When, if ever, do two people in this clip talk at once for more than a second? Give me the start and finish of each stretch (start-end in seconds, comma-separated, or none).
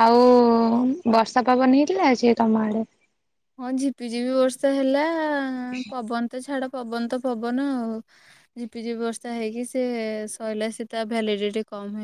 none